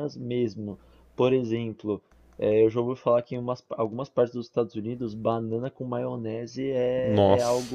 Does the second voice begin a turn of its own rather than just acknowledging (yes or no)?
no